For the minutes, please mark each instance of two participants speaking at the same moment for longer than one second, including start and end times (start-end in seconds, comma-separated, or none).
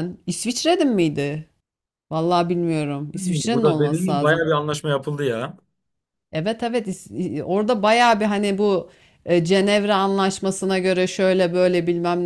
3.1-4.5